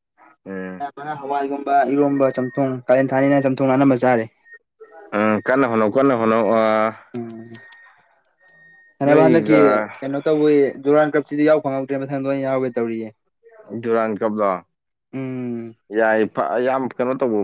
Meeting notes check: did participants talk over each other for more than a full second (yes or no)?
no